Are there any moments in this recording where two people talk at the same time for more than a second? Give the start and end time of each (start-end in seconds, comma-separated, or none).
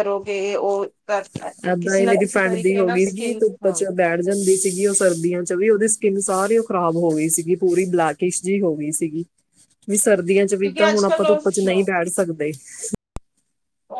1.7-3.8